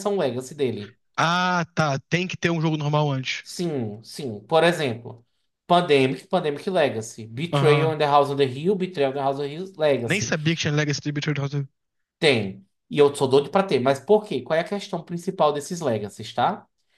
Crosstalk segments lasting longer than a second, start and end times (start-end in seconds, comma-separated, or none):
none